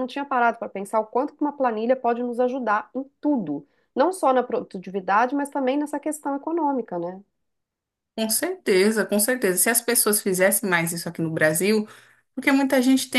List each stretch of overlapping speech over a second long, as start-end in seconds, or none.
none